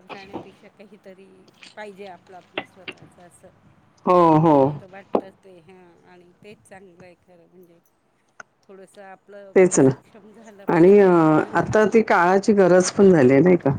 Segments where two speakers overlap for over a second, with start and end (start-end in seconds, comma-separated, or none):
none